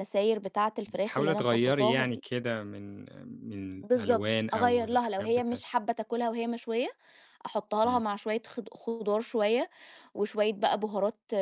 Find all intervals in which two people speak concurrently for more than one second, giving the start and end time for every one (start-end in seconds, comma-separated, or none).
0.9-2.2, 3.8-5.6